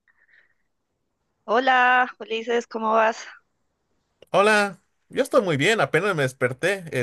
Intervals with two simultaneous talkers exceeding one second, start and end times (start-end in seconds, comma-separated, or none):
none